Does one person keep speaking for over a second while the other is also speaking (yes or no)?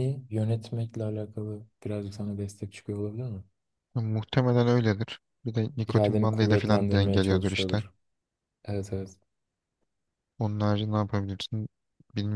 yes